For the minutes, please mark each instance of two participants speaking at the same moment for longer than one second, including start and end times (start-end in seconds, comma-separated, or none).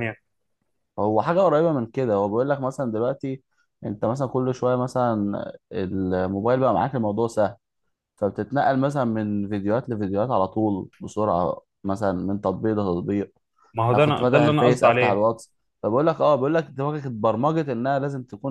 13.9-15.2